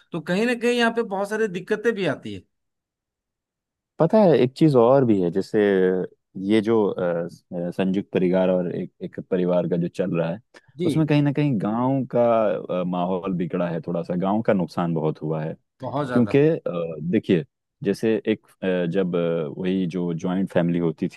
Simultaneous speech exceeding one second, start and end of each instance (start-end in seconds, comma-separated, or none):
none